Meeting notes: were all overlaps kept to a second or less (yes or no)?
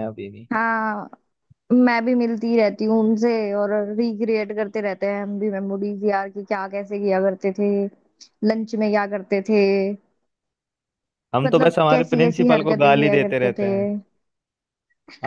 no